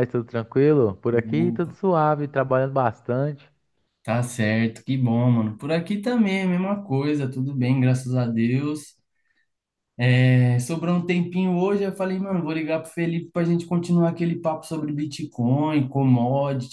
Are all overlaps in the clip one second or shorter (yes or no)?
yes